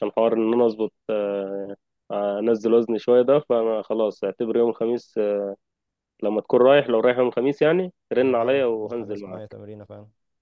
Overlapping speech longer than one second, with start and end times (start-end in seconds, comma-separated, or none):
8.2-9.6